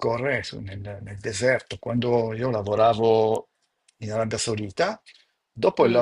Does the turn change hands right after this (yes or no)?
no